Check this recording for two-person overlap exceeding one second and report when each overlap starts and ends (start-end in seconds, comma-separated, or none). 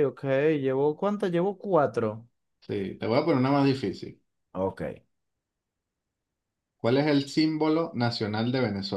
none